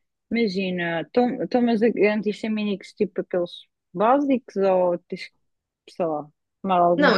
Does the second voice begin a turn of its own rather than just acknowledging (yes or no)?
yes